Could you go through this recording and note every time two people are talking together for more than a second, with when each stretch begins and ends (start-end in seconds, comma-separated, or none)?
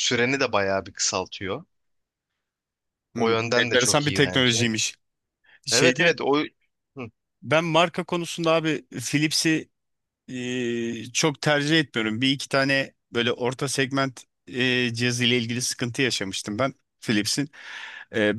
3.1-4.7